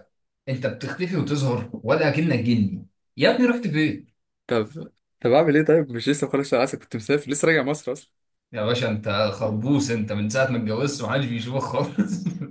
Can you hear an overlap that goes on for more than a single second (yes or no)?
no